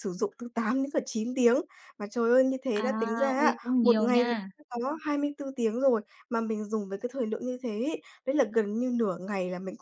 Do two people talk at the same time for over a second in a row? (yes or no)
yes